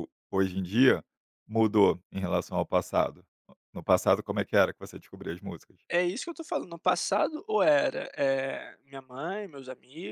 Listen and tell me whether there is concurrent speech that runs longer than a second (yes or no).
no